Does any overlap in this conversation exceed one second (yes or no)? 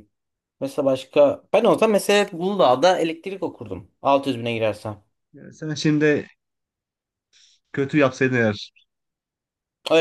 no